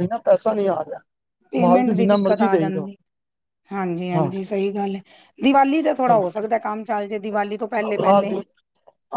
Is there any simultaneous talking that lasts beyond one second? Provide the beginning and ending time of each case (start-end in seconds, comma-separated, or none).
1.6-2.9